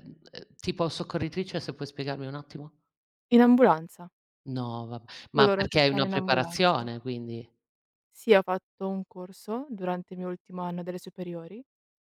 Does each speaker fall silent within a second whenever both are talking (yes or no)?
no